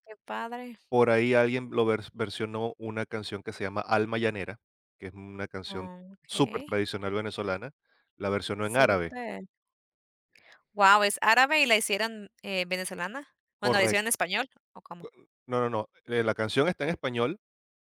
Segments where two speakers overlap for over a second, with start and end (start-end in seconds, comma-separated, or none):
none